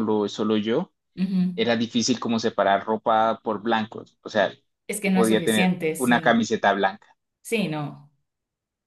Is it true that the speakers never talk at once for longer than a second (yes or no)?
no